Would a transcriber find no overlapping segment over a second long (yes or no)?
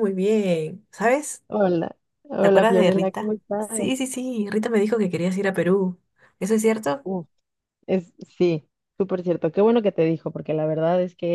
no